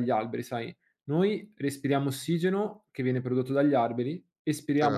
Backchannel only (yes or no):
yes